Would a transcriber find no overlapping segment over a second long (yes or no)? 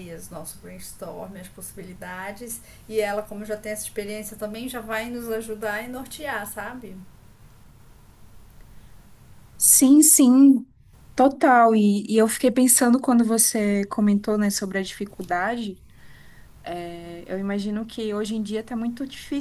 yes